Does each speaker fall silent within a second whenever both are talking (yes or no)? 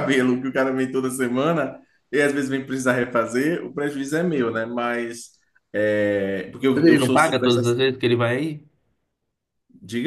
yes